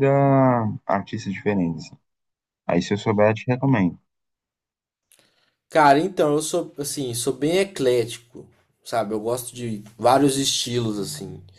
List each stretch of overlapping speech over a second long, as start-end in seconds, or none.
none